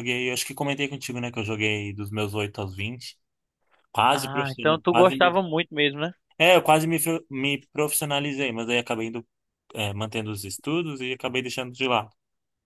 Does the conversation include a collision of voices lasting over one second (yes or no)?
yes